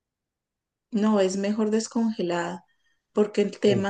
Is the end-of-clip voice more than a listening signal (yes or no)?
no